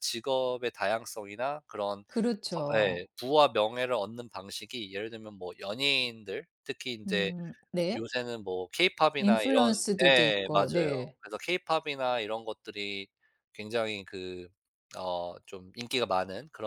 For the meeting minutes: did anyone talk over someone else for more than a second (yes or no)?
yes